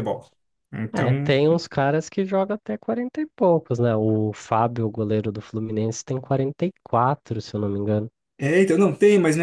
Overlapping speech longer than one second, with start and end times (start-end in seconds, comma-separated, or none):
none